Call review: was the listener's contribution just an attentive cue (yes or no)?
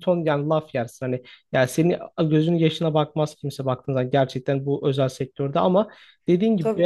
yes